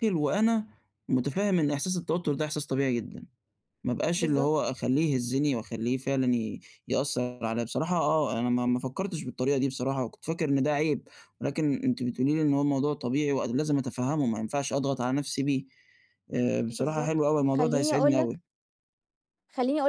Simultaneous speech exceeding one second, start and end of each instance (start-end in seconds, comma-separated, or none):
16.7-18.4